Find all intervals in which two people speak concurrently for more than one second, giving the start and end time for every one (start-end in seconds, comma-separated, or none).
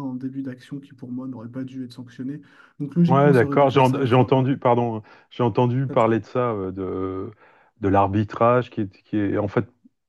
3.1-4.5